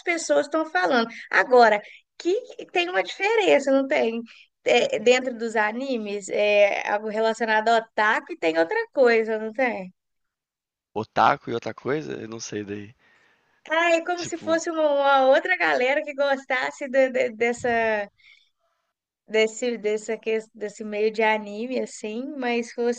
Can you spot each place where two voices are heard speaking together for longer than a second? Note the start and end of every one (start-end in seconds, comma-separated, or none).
none